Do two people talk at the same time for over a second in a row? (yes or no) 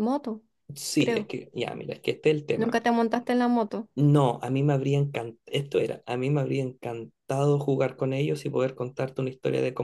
no